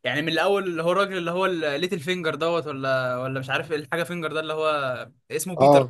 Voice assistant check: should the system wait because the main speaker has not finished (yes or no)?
yes